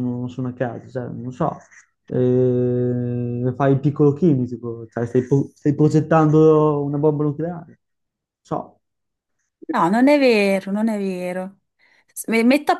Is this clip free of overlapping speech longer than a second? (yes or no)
yes